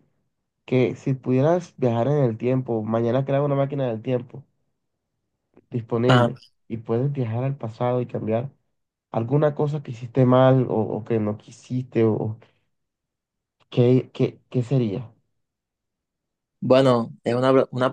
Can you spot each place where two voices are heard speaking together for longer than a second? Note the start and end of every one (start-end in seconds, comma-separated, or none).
none